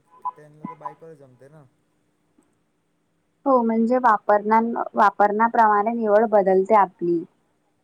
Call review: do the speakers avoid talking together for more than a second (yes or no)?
yes